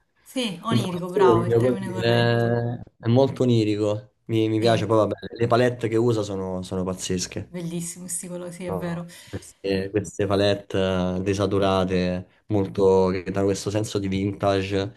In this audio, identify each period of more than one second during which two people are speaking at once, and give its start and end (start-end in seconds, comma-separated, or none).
0.7-2.6